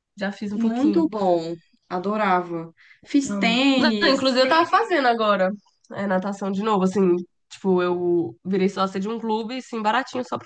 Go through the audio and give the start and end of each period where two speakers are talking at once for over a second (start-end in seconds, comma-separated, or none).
3.2-4.7